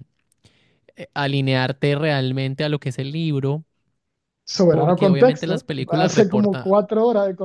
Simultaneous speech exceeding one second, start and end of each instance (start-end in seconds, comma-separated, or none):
4.7-6.7